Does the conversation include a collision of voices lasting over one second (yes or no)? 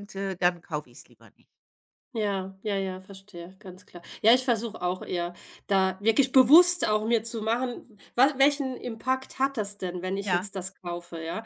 no